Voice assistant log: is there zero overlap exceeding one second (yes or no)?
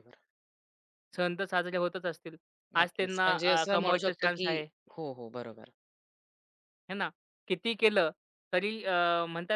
no